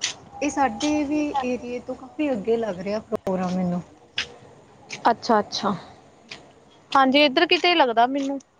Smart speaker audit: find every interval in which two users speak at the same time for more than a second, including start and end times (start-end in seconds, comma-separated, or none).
none